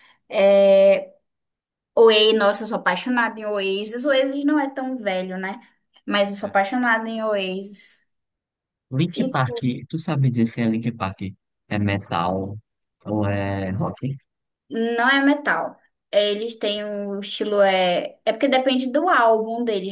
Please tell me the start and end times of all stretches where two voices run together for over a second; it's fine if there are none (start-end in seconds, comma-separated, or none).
none